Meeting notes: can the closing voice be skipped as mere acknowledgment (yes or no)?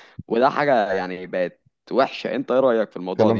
no